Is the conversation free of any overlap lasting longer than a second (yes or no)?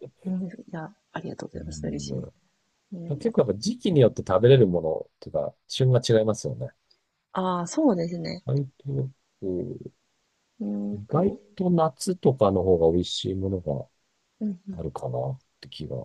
yes